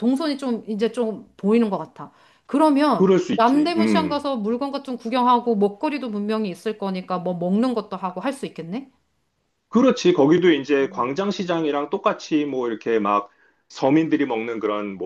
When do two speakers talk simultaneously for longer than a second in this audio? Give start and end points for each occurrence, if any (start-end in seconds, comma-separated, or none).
3.0-4.2